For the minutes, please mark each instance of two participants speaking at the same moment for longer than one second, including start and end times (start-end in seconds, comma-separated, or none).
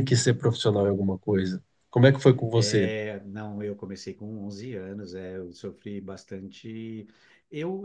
none